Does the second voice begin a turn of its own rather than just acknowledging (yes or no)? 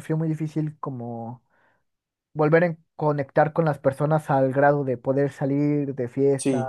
yes